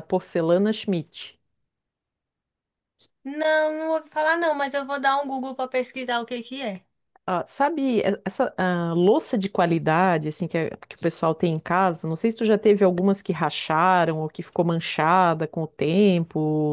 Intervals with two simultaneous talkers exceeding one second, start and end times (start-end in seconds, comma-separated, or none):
none